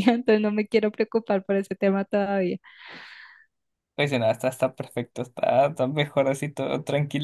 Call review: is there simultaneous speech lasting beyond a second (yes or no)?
no